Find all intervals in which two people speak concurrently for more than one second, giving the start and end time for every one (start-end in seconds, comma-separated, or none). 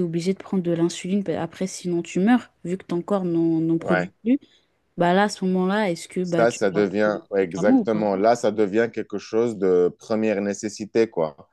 6.2-8.1